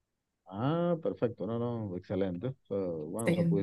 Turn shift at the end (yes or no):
no